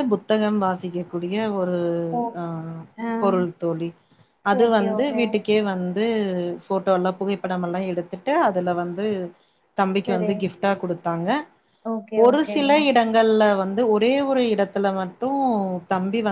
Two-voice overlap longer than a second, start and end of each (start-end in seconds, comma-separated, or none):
none